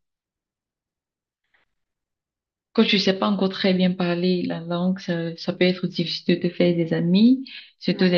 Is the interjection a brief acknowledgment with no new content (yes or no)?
yes